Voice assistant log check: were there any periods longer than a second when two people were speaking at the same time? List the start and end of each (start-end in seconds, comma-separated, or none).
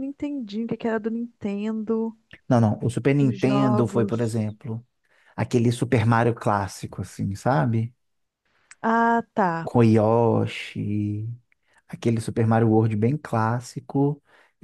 3.2-4.6